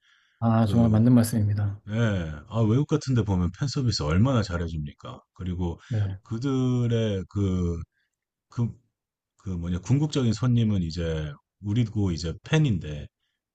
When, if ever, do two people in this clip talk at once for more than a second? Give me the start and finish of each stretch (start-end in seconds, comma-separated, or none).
none